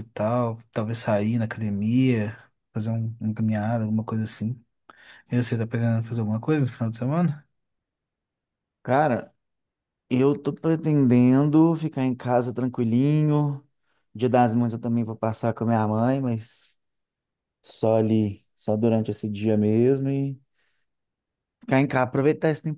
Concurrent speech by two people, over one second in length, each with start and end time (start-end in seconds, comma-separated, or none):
none